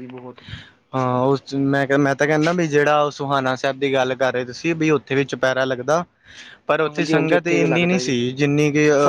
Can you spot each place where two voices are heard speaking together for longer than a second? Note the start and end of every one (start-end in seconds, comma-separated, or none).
6.9-8.2